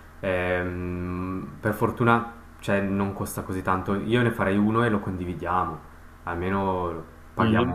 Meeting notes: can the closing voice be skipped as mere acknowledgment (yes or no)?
yes